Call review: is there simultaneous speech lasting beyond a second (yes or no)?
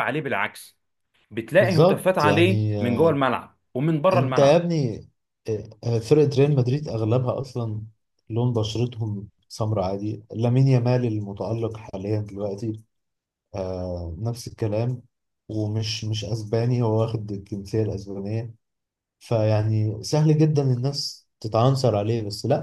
yes